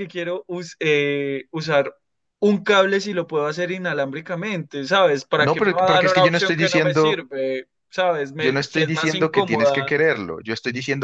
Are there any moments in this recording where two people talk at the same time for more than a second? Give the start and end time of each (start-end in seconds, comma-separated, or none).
5.4-7.2, 8.4-9.9